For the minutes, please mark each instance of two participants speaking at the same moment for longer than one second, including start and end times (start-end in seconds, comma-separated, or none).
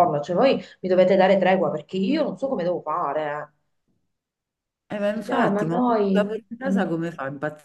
5.1-6.9